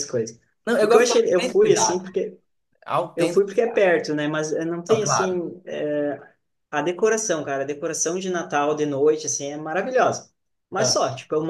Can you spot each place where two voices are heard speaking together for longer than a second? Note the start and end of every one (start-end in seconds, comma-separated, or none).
0.8-2.0